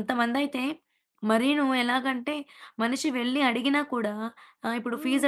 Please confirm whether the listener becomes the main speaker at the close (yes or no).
no